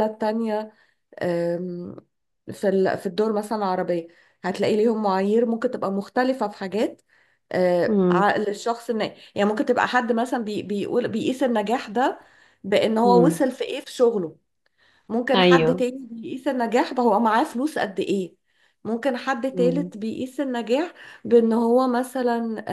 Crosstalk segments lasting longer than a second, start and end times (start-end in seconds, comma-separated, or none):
none